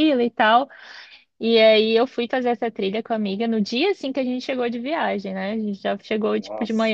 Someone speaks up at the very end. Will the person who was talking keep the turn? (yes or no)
yes